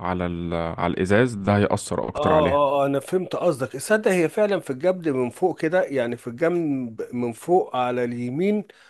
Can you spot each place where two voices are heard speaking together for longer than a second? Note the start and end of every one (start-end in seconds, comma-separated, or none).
none